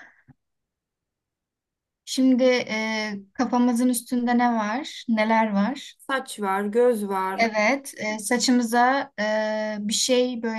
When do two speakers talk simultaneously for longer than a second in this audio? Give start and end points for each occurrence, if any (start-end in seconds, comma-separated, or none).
none